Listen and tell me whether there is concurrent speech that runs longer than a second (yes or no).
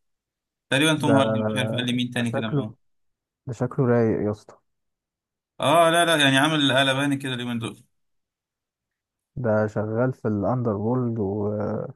yes